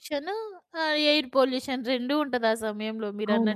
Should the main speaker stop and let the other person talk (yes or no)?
yes